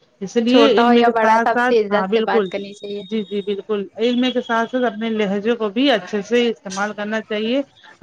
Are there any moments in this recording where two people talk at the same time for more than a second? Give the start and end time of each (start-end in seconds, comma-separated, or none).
0.5-2.5